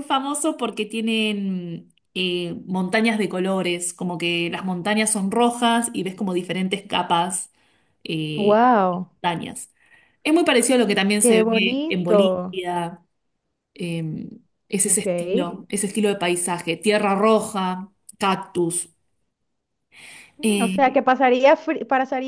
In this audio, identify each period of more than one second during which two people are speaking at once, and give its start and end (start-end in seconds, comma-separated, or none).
11.2-12.6